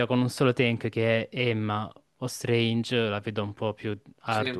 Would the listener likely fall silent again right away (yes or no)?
no